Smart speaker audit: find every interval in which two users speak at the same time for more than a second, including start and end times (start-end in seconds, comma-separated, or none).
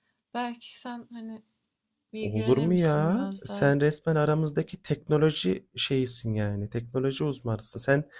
2.2-3.8